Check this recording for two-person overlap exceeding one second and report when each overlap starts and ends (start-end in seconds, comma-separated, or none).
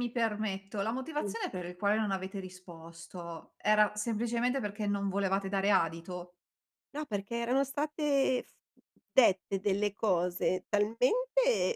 none